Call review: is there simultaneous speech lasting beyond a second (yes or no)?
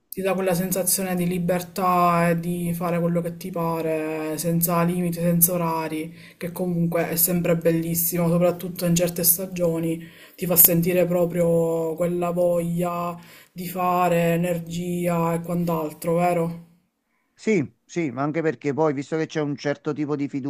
no